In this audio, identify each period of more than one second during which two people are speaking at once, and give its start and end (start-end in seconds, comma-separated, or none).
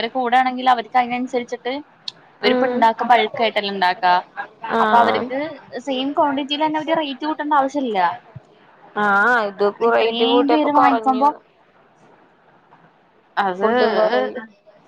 9.9-11.3